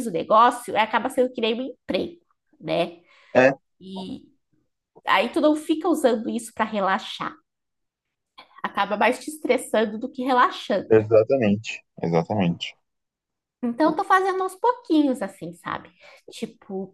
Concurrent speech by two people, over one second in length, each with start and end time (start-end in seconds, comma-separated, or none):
none